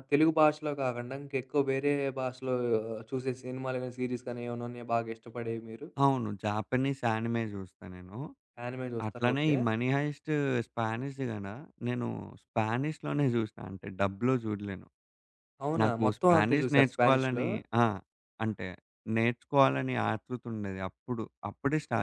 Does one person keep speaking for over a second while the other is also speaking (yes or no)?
yes